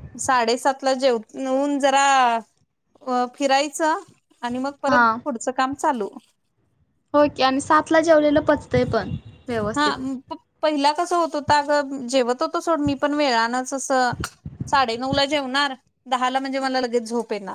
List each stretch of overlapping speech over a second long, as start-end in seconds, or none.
none